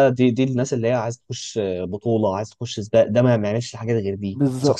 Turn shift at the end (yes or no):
yes